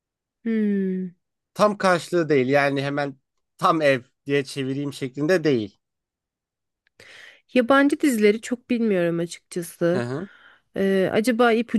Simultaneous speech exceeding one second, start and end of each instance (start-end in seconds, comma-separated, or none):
none